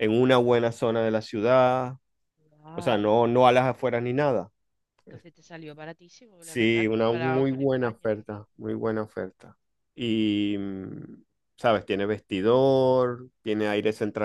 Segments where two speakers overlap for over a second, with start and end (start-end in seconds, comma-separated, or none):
6.4-8.4